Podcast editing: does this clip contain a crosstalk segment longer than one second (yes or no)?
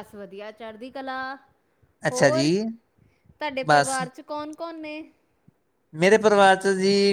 no